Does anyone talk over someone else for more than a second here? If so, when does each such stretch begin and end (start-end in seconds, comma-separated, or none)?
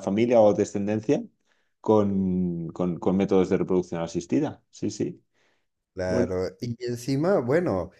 none